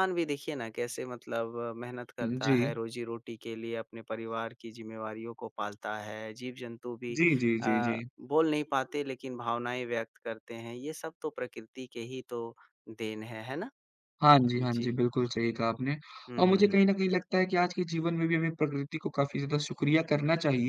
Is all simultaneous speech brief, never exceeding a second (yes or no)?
yes